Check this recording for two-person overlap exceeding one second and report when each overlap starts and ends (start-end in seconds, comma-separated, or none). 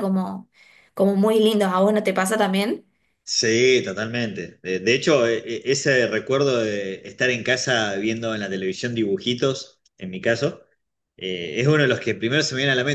none